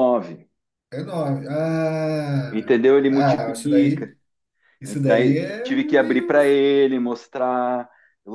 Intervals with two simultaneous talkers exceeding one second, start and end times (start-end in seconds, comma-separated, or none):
2.5-4.1, 4.8-6.4